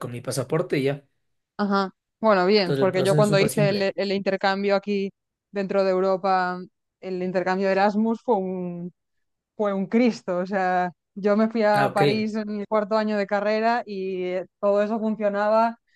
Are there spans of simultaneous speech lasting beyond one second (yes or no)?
yes